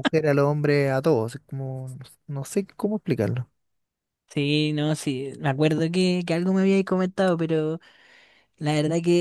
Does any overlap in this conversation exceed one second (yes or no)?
no